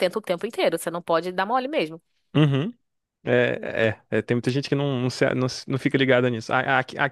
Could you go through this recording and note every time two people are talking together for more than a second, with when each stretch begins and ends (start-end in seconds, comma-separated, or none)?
none